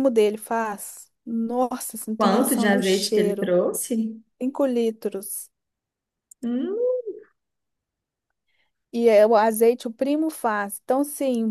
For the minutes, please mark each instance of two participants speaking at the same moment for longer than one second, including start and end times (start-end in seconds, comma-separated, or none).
2.1-3.5